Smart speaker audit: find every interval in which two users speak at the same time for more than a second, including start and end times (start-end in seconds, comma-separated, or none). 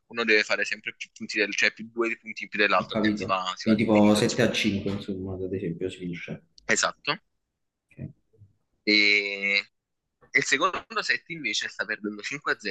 2.8-4.6